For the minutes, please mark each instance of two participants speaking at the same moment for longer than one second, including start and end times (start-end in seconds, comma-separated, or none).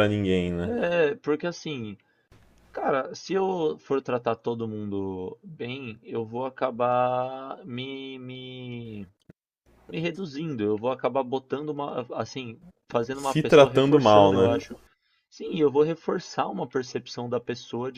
13.1-14.5